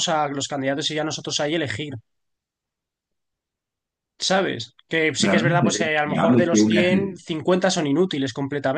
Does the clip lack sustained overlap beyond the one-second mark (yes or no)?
no